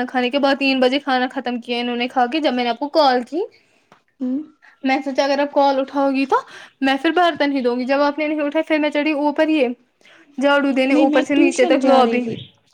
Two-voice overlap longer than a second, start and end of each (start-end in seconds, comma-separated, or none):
10.9-12.2